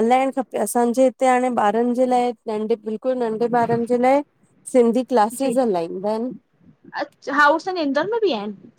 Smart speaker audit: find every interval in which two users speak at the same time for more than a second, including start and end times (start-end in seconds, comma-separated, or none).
none